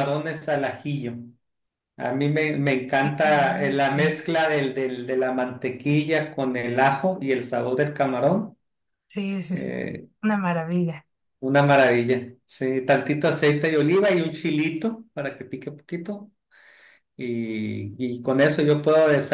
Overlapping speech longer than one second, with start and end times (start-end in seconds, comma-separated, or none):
none